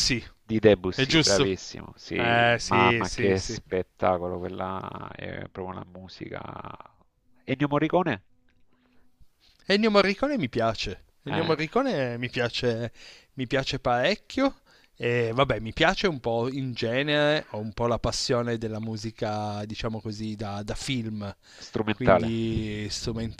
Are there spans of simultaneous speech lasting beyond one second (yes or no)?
yes